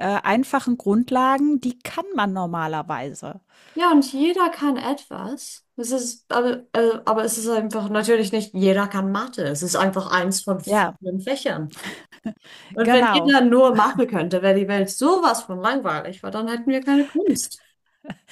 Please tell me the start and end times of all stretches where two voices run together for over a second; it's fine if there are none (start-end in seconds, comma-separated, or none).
none